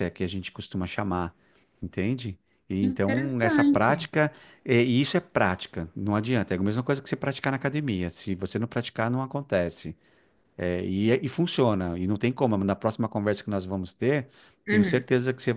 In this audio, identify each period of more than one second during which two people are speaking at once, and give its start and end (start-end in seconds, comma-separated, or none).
2.8-4.1